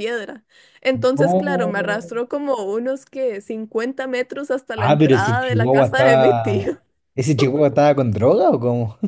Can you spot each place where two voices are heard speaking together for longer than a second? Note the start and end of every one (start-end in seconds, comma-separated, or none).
4.8-6.8